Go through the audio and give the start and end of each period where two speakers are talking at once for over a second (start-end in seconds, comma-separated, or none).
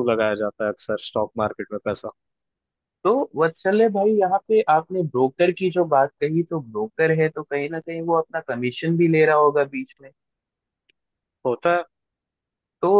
none